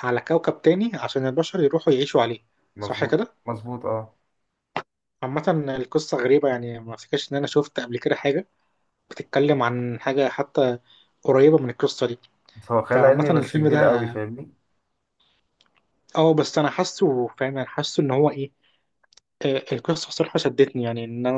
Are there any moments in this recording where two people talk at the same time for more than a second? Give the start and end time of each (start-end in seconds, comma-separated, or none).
12.9-14.2